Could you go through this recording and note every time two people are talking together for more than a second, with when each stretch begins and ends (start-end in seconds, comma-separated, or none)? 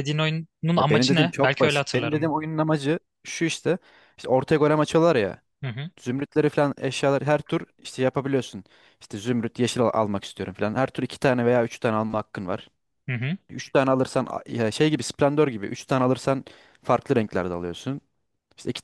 0.8-2.4